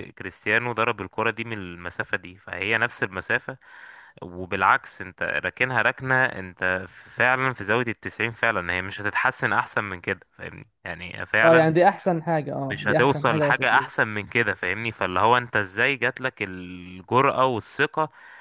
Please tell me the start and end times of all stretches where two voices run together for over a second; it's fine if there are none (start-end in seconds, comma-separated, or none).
12.7-13.9